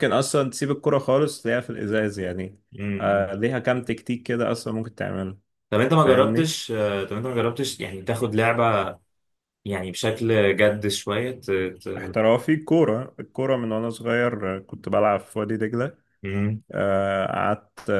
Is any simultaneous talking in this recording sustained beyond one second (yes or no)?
no